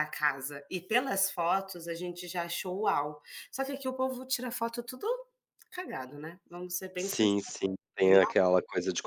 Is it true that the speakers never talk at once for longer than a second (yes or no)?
yes